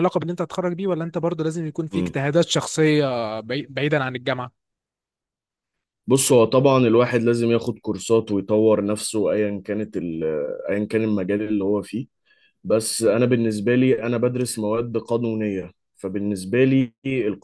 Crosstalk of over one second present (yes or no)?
no